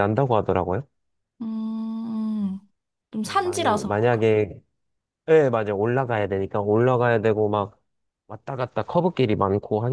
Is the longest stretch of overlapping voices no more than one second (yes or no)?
no